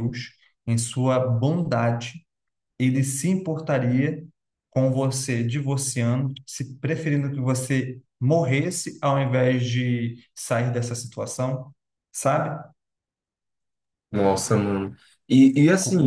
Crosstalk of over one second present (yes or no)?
no